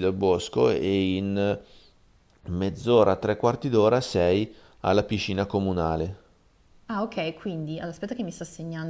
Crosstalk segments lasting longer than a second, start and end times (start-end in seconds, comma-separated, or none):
none